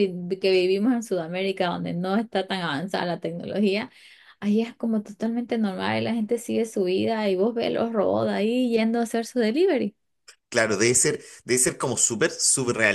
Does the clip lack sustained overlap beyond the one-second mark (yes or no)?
yes